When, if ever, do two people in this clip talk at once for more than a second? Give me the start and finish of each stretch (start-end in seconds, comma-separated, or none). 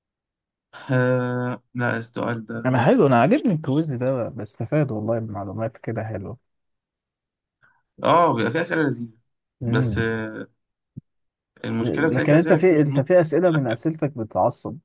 11.8-13.0